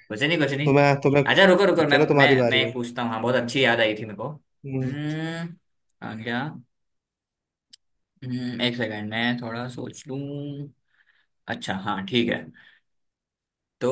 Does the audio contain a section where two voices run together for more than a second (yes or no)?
yes